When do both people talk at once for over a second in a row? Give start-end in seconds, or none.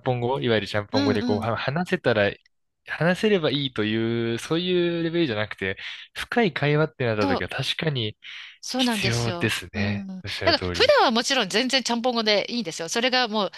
8.8-10.9